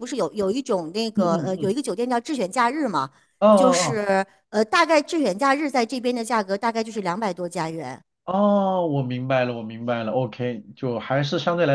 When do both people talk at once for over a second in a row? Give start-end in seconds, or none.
none